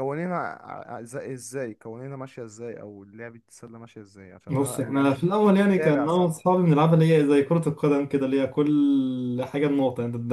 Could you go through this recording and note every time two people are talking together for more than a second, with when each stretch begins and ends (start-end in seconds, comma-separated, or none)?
4.5-6.3